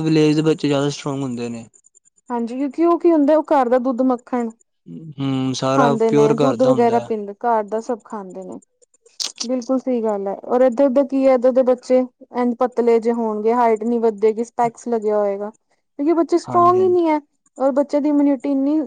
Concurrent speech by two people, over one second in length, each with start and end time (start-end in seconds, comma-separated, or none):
none